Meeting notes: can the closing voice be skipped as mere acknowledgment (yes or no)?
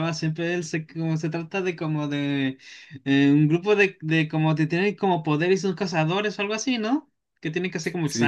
no